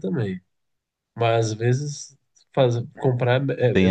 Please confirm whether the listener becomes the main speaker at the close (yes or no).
yes